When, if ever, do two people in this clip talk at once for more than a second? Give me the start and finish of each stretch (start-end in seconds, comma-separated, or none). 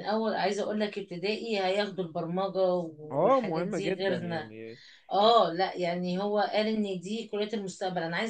3.1-4.5